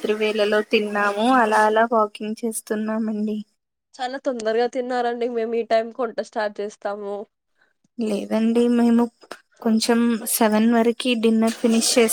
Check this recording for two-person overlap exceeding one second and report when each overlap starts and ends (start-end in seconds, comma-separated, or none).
none